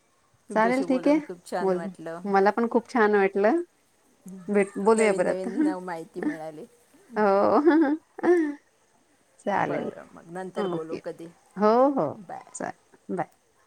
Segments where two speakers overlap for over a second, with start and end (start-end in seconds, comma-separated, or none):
none